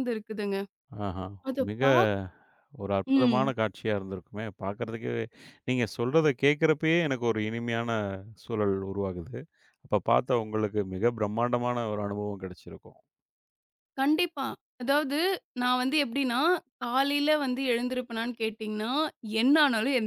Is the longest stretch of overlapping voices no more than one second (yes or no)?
yes